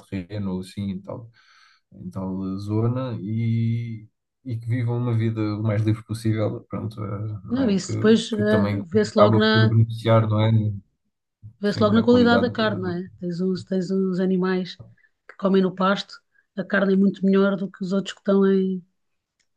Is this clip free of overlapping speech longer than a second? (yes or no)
no